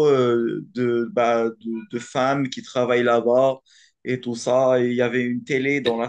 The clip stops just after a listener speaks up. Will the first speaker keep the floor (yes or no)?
yes